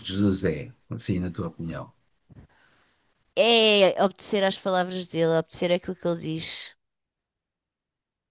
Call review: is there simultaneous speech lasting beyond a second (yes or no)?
no